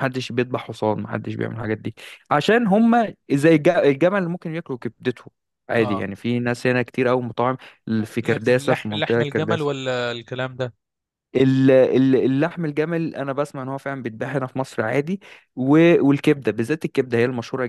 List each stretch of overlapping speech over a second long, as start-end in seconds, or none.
8.2-9.7